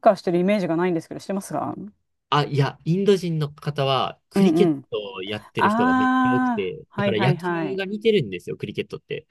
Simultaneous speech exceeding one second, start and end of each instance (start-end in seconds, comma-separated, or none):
5.6-7.8